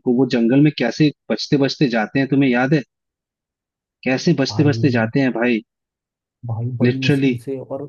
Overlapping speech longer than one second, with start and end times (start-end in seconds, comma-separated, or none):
none